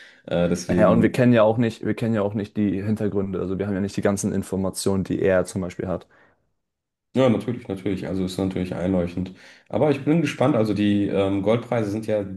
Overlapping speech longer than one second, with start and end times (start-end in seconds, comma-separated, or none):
none